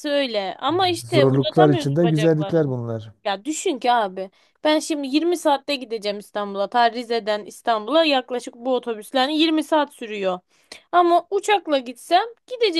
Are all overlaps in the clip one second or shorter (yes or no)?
no